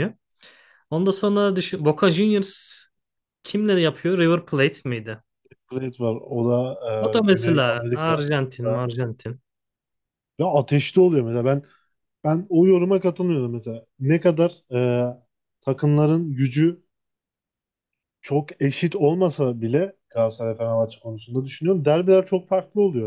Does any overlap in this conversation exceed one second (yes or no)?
yes